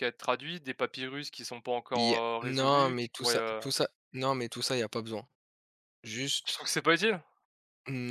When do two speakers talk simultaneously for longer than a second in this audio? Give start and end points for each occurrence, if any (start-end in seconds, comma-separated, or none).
1.9-3.6